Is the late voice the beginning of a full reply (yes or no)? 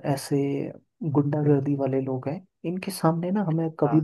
no